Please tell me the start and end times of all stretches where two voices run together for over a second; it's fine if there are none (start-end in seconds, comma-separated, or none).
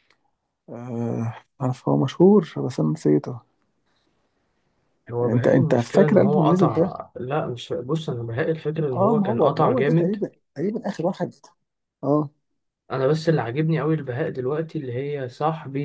5.2-6.9, 8.9-10.2